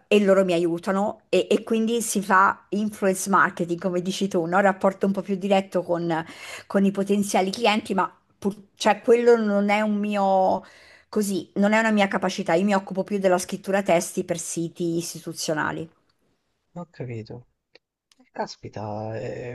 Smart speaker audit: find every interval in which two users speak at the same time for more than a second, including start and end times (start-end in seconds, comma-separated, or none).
none